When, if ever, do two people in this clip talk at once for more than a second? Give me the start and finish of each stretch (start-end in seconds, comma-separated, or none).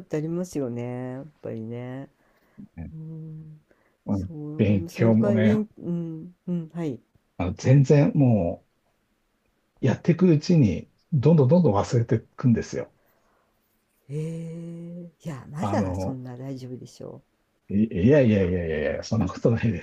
4.1-5.6